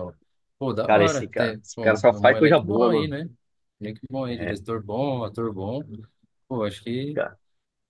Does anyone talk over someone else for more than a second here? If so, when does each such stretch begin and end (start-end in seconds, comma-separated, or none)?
0.9-3.1